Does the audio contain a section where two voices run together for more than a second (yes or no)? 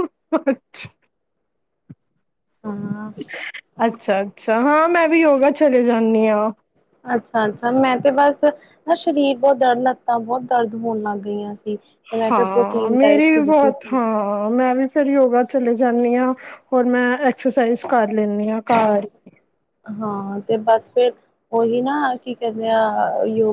yes